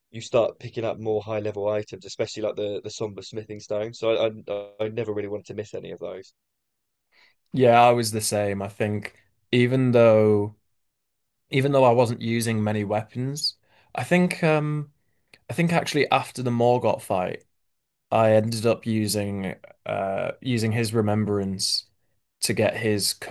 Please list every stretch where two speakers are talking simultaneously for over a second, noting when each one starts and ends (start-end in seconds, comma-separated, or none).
none